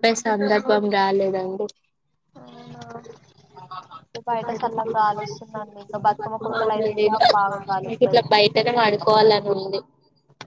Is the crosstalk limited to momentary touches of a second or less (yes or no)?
no